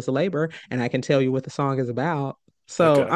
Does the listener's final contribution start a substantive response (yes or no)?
no